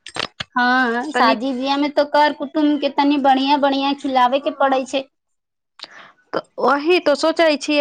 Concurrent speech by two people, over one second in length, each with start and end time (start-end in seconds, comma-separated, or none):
none